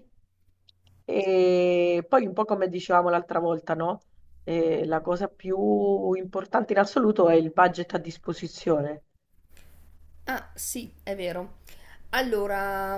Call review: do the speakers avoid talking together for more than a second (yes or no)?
yes